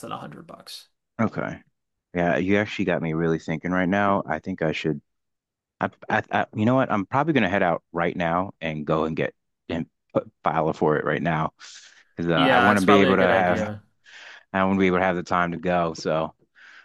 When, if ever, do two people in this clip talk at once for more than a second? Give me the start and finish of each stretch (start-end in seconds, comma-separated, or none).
12.3-13.7